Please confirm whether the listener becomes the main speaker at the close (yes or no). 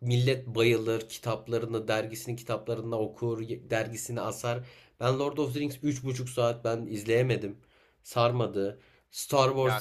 yes